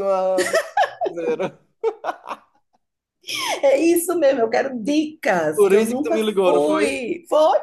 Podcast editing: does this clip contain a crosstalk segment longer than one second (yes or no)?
yes